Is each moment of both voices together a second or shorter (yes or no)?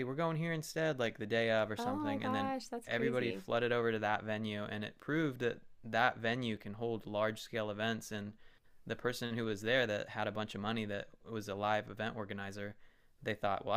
no